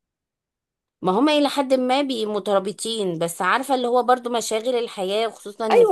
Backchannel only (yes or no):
no